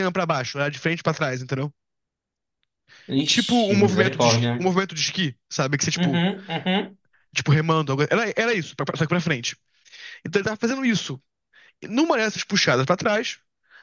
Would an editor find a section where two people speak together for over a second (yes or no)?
yes